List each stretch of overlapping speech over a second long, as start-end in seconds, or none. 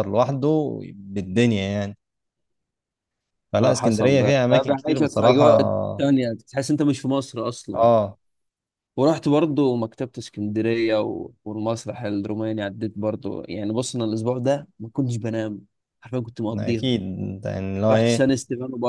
3.6-5.6